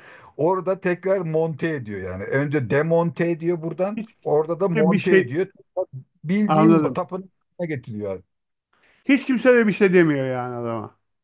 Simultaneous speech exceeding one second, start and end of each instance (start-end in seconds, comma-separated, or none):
4.0-5.4